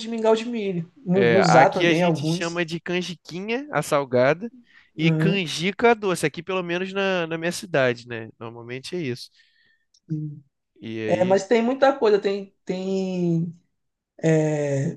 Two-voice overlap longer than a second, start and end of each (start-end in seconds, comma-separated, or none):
1.1-2.6